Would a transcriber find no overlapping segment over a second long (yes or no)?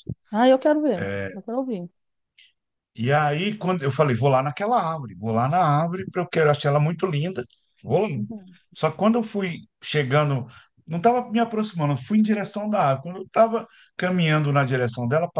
yes